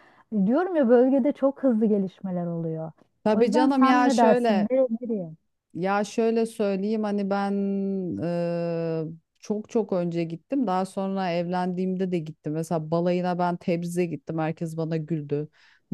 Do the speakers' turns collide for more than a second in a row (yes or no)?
yes